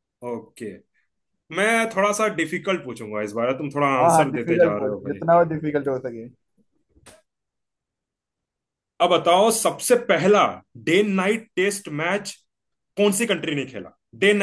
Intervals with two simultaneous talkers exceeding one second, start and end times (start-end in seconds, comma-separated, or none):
4.0-5.3